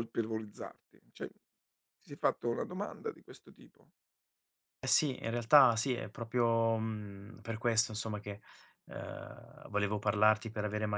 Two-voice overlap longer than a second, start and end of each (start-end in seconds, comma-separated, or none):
none